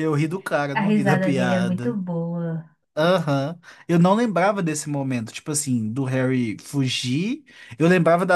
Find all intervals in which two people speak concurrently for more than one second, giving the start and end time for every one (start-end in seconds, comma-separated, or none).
0.7-2.0